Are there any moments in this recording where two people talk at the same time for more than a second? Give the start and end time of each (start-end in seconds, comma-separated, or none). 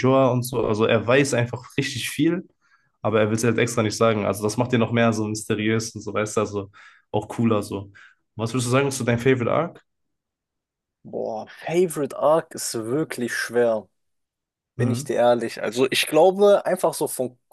none